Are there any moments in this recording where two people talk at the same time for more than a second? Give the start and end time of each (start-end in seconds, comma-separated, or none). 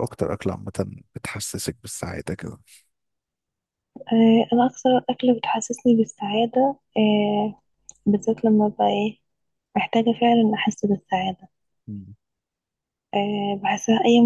none